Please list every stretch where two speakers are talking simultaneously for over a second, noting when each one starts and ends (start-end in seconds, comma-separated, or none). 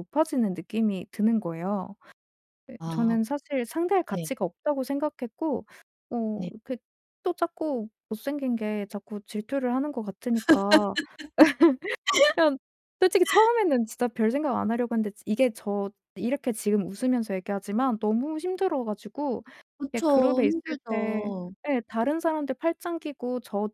19.9-21.3